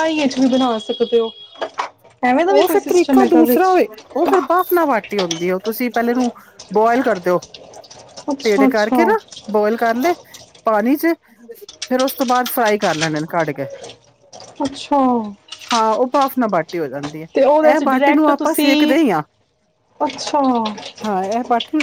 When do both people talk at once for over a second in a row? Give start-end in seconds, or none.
17.7-19.0